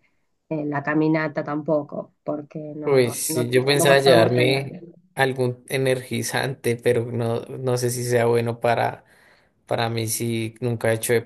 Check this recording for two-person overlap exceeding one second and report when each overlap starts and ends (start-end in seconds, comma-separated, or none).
2.8-4.7